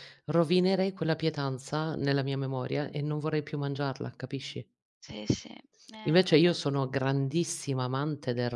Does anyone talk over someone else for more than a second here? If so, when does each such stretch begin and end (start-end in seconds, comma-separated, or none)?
none